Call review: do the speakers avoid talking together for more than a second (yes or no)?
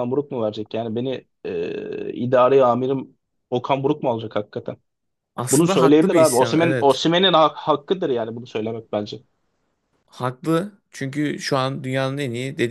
no